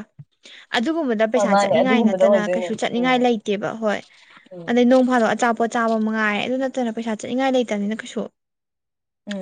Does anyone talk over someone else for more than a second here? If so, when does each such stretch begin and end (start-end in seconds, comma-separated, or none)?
1.6-3.1